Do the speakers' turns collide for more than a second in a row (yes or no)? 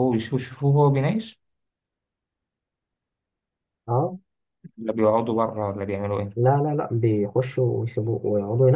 no